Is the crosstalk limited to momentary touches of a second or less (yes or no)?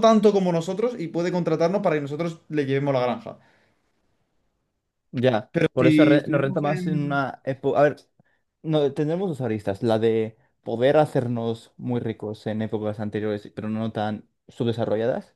no